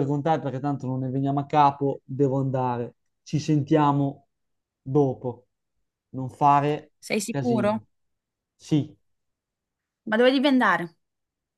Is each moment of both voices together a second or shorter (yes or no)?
yes